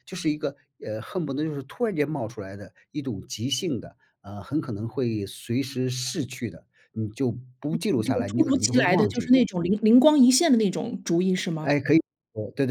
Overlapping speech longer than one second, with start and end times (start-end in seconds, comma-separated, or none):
7.7-9.3